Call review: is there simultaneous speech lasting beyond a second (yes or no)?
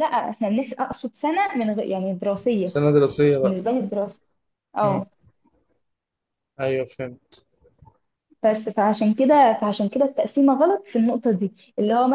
no